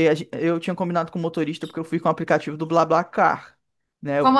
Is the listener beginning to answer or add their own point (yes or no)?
no